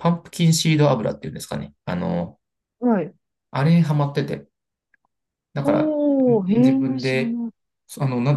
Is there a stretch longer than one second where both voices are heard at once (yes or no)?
yes